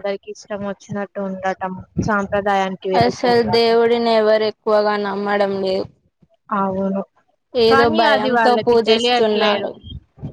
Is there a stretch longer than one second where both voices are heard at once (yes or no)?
yes